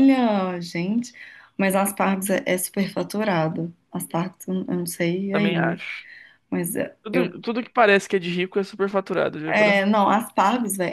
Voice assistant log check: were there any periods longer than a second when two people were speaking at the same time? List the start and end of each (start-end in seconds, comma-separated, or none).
none